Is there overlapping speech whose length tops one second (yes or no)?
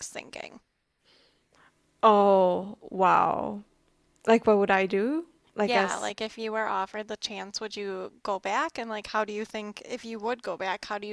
no